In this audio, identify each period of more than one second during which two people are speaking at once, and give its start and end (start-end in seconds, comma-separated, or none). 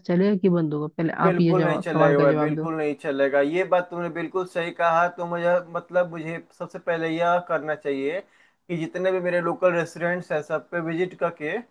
1.2-2.7